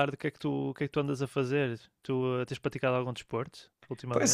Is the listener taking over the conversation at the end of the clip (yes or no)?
yes